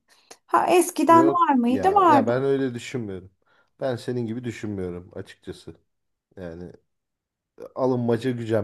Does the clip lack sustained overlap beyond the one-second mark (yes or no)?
no